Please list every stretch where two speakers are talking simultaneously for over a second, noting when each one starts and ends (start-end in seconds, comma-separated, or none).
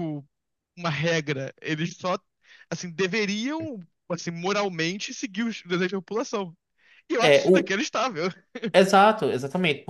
none